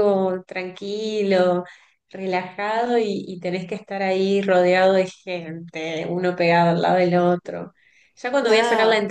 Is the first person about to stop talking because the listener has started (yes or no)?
no